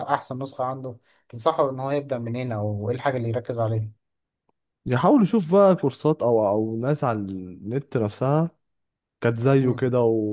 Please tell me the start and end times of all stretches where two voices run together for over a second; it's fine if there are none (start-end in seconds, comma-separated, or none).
none